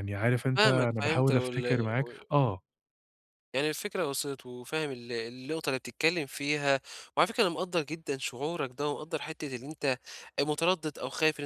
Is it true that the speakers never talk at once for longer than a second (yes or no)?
no